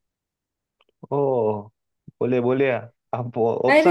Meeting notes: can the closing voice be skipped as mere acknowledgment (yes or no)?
no